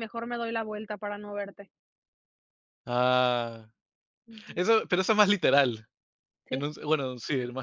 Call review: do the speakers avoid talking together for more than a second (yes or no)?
yes